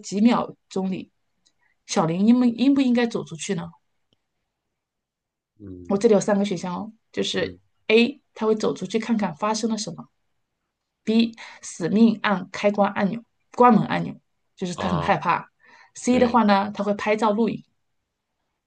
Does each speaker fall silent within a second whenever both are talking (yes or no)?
yes